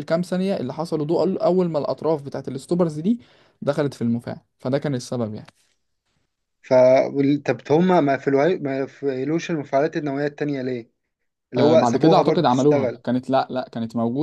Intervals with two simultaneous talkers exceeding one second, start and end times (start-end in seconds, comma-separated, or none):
11.6-13.0